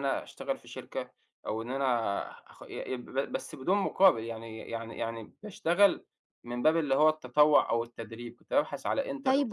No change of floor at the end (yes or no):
no